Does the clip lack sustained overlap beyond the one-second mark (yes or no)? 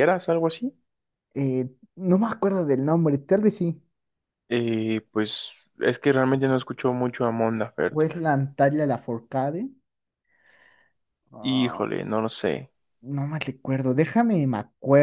yes